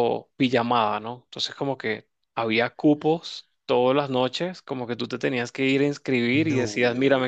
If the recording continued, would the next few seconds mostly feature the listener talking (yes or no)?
no